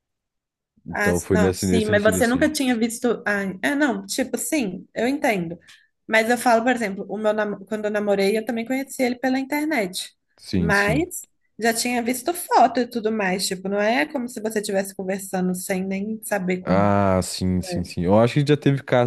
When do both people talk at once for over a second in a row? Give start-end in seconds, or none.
0.9-2.5